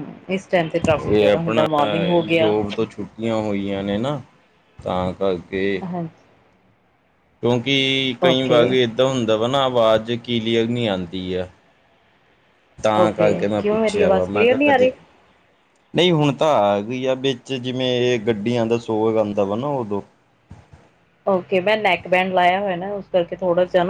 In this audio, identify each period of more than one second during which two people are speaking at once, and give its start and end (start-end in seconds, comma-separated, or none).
13.0-14.9